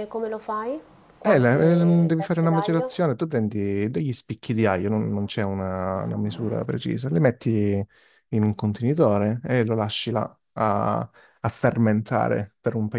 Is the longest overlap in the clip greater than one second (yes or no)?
yes